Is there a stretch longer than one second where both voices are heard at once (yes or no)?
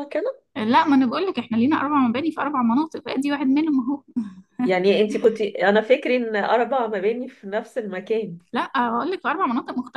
no